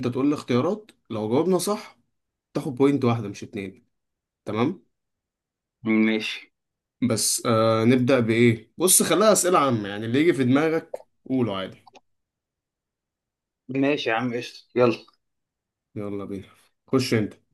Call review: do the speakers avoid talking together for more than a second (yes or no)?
yes